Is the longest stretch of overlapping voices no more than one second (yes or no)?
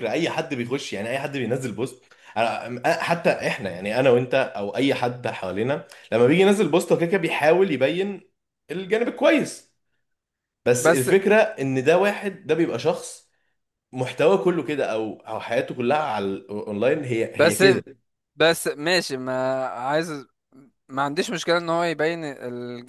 yes